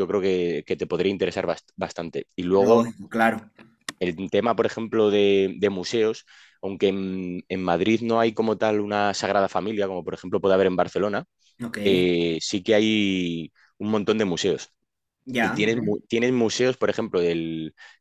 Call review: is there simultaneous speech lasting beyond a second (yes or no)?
no